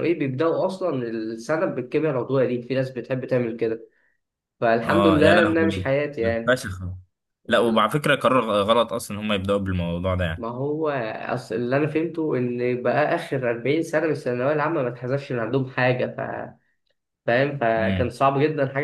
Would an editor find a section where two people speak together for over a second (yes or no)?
yes